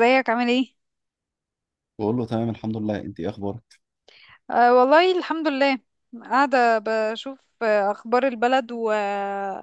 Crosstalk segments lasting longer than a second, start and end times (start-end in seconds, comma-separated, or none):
none